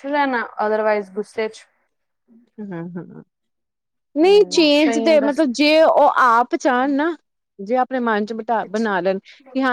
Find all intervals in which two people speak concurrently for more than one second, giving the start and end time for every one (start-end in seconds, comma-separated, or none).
4.2-5.6